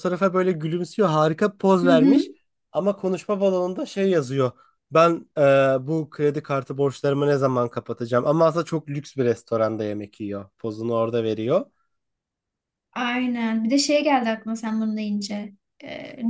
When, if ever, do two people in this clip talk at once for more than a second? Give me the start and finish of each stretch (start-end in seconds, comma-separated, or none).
none